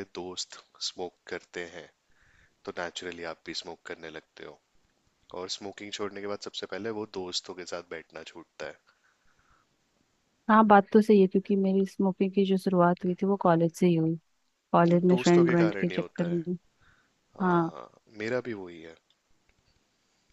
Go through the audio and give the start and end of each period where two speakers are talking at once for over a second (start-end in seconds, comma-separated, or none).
14.8-16.4